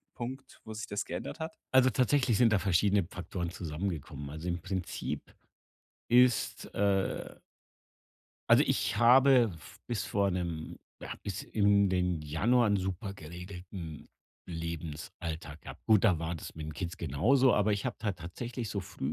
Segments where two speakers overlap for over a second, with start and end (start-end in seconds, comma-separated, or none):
none